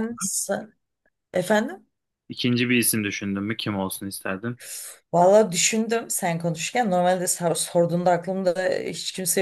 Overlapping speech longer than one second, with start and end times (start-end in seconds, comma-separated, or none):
none